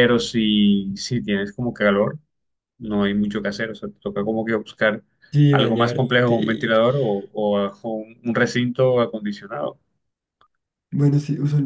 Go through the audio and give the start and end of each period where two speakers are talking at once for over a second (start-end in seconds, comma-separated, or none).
5.5-6.7